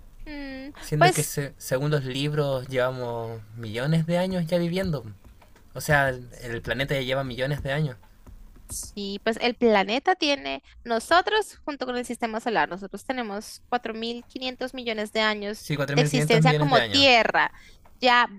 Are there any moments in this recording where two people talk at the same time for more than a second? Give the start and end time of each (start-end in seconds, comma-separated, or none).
15.6-17.1